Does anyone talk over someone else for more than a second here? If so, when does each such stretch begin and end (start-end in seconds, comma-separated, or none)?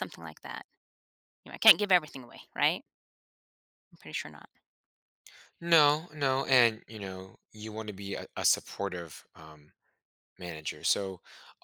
none